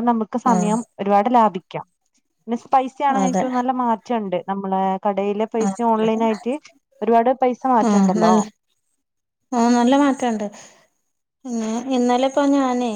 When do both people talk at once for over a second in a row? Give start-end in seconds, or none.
none